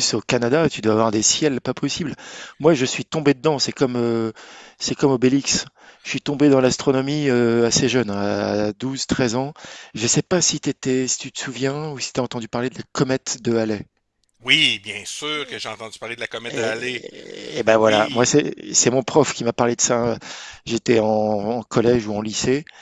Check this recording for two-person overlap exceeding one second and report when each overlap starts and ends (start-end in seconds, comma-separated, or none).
none